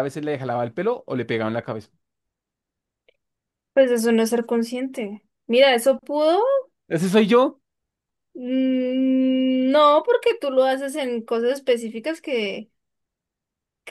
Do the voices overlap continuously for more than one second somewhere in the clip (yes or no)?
no